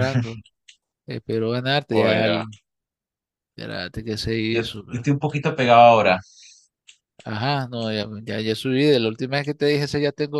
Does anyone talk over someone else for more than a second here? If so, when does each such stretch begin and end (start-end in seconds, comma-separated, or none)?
none